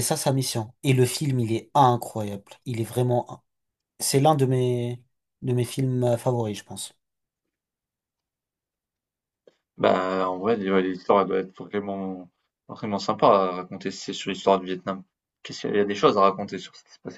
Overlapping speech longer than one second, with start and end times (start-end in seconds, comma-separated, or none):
none